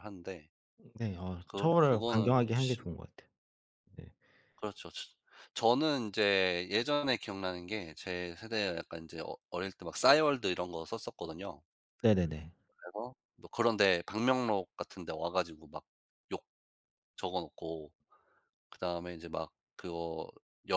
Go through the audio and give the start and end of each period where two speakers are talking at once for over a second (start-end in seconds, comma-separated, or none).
1.5-2.9